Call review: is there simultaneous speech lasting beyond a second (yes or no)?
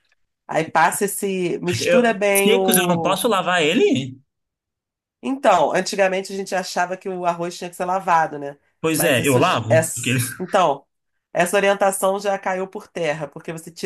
yes